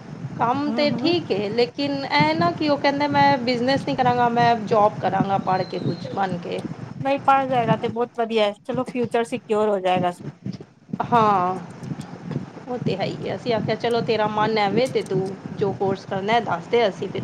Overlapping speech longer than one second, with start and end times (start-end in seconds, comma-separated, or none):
none